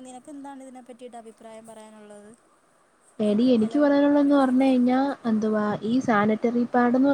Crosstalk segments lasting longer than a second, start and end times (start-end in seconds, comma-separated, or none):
none